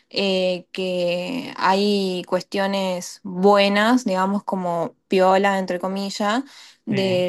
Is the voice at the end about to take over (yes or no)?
no